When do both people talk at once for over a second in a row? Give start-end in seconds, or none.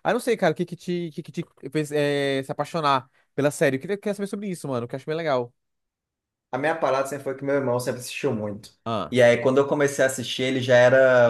none